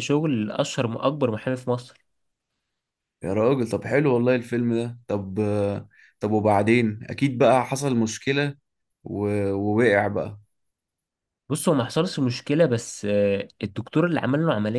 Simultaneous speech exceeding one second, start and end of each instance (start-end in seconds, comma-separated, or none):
none